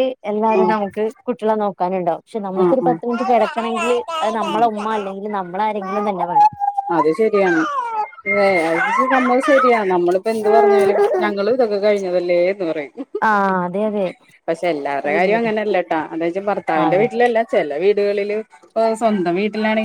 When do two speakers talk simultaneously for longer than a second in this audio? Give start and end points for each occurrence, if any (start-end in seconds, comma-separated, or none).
none